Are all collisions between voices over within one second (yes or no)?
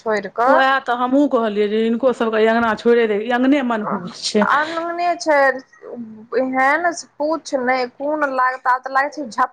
yes